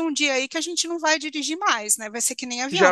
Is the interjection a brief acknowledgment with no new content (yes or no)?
no